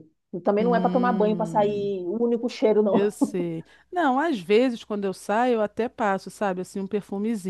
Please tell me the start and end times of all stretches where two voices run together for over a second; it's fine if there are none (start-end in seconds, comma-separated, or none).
0.6-1.9